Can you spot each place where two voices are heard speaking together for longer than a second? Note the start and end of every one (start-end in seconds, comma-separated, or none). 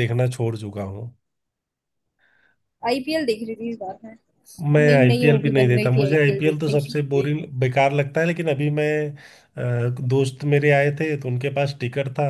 4.8-7.0